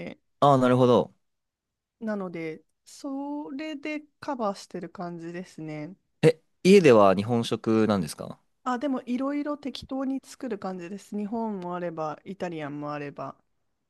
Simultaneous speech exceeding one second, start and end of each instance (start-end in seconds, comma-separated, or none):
none